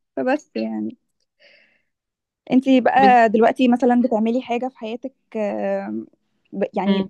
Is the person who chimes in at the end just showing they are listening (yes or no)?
yes